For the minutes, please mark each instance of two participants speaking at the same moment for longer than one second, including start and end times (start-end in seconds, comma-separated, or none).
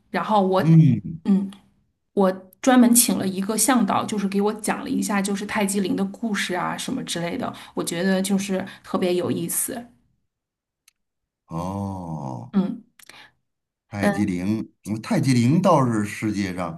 none